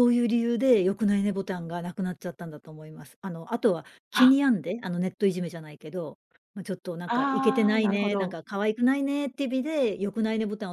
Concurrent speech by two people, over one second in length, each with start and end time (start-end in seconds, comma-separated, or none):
7.0-8.3